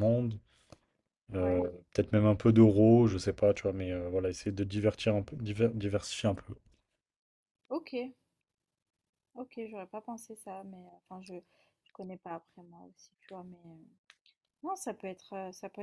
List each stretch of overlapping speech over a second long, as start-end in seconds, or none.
none